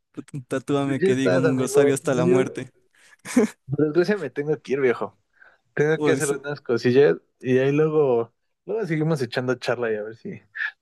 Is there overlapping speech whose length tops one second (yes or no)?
yes